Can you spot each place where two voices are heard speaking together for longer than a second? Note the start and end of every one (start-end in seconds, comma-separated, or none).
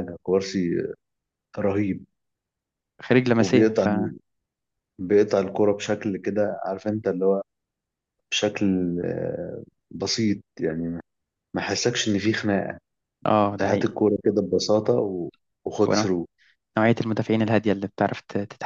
none